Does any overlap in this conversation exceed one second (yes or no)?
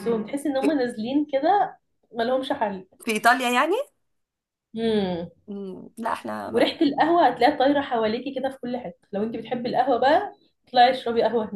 no